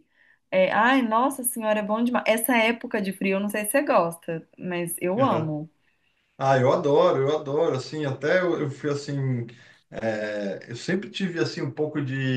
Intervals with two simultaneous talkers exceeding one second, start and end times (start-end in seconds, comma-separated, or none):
none